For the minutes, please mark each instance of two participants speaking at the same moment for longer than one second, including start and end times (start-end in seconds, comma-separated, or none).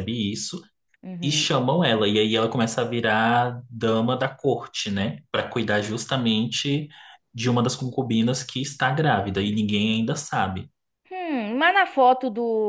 none